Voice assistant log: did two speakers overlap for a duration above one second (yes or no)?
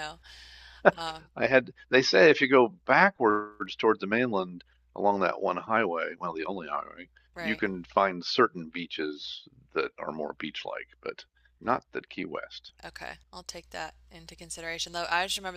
no